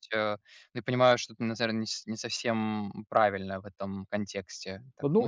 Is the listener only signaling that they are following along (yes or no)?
no